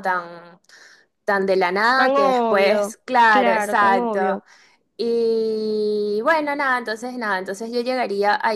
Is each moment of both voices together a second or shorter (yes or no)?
no